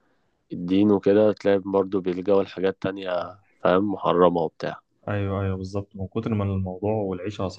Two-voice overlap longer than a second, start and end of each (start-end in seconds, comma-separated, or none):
none